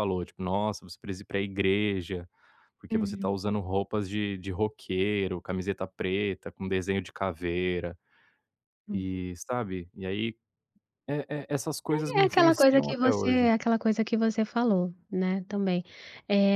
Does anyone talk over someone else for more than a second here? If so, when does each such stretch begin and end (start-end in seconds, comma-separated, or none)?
12.2-13.5